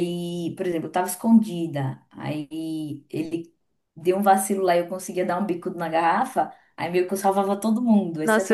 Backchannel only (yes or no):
no